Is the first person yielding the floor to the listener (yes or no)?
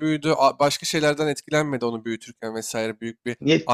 no